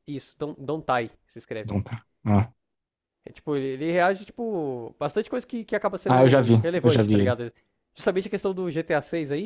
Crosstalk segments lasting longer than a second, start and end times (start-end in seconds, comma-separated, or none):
6.1-7.4